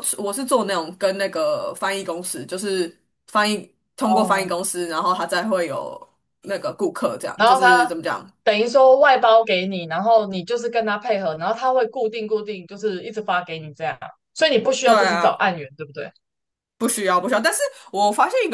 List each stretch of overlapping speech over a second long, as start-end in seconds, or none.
none